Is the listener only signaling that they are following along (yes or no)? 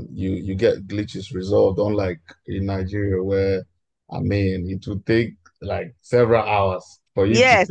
no